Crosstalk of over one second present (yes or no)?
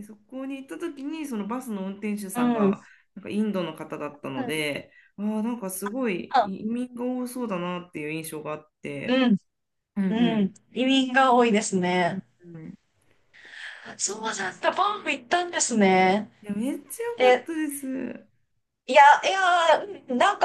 no